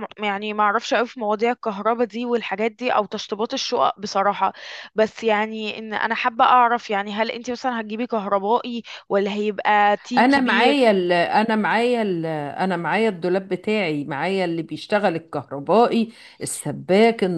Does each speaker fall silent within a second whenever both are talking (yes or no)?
yes